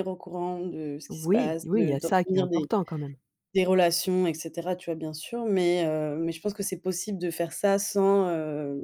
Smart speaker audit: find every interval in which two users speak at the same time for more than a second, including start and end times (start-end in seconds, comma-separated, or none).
1.1-2.7